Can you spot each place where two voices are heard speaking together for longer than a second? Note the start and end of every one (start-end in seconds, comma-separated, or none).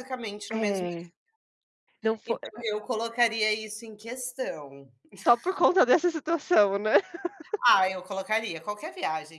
none